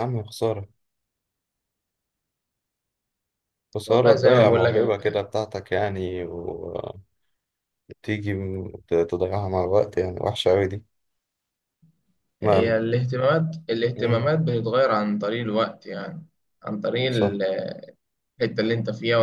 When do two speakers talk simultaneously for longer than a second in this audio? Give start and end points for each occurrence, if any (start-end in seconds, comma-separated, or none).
3.9-5.2